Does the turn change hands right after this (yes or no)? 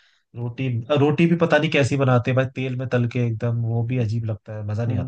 yes